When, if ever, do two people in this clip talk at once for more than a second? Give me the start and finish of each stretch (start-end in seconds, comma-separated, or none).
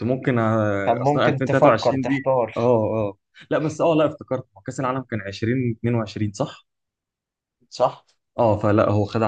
0.8-2.6